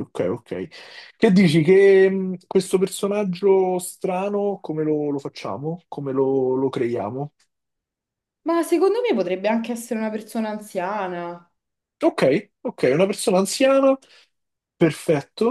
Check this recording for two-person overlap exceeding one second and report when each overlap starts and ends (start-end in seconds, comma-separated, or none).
none